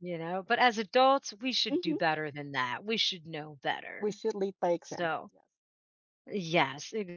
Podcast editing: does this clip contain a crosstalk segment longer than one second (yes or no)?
no